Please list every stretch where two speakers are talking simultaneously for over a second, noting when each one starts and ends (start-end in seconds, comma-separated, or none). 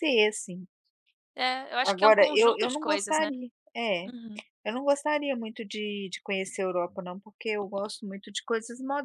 1.8-3.3